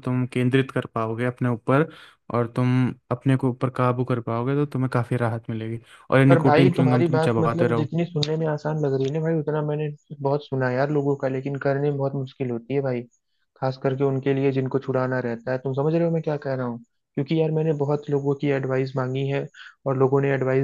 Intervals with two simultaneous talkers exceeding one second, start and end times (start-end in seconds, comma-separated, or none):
6.3-7.9